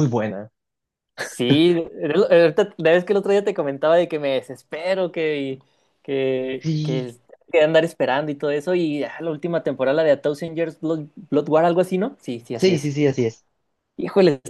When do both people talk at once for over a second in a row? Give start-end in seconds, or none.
none